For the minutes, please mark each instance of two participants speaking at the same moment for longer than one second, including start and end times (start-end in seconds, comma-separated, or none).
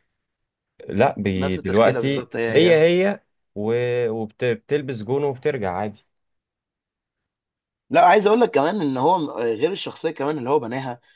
1.4-2.8